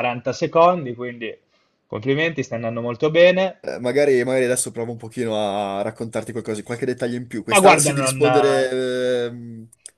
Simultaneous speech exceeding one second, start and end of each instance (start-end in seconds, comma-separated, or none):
7.5-8.7